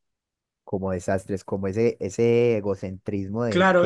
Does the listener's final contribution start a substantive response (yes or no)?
yes